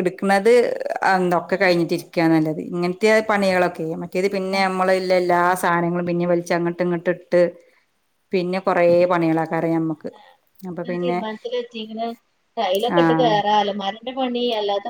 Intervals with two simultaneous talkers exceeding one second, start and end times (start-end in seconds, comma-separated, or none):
none